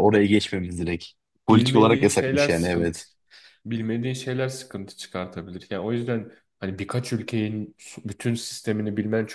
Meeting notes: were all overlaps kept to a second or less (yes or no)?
no